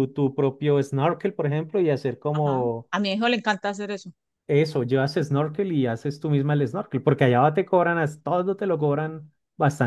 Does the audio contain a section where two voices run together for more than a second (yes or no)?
no